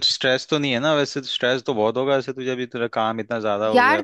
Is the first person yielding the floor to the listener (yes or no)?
yes